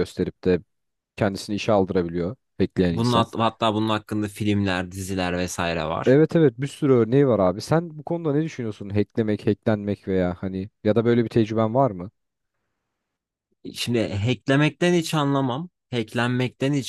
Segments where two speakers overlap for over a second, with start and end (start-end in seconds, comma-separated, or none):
none